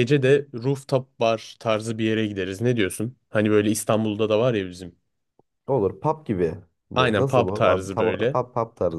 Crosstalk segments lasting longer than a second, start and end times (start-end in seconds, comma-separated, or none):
6.9-8.4